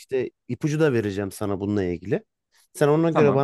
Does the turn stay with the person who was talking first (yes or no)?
yes